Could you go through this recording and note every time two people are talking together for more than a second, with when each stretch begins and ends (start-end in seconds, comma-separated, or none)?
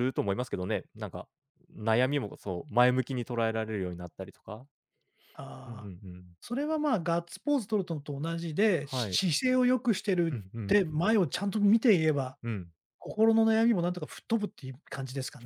none